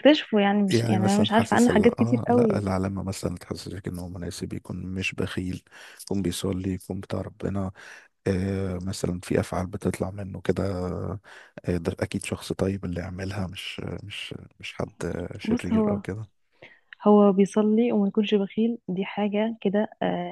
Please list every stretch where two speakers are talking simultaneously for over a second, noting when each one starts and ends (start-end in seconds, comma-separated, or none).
0.7-2.6